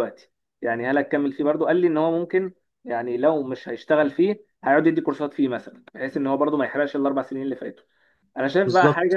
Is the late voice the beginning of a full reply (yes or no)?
no